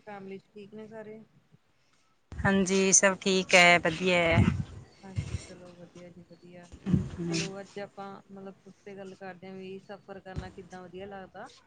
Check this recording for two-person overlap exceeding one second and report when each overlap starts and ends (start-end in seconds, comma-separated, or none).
none